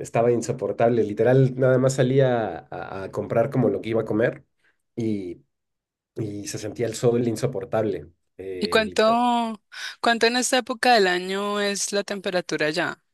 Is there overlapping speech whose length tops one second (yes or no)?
no